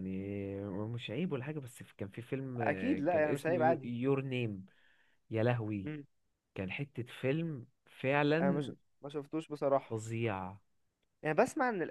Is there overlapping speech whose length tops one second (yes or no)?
yes